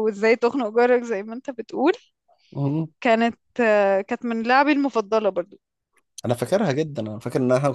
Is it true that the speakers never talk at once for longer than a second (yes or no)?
yes